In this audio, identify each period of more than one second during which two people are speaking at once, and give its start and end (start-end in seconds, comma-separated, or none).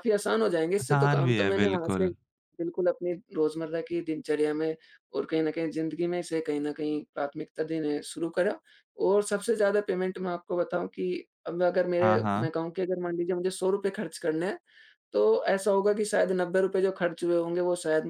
0.8-2.1